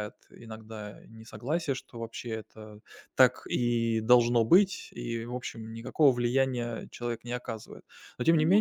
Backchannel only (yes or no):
yes